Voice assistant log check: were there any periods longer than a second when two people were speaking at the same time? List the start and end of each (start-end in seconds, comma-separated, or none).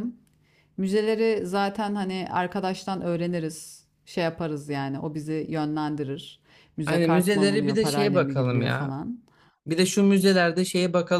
6.9-8.9